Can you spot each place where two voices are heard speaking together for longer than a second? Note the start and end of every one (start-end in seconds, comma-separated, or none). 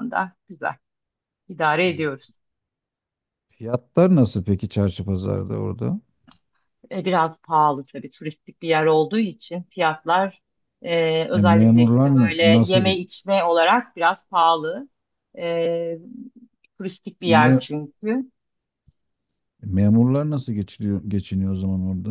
11.3-12.8